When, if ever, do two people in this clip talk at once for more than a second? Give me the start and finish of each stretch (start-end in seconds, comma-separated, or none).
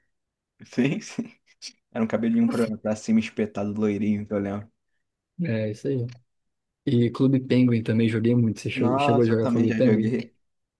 8.8-10.1